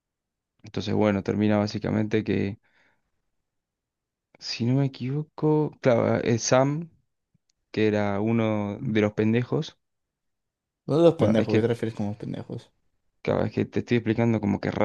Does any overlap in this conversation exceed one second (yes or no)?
no